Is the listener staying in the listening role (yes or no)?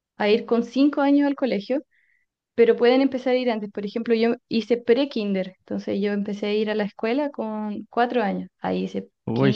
yes